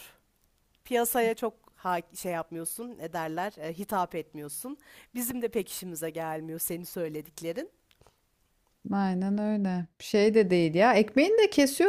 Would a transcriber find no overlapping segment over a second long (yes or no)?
yes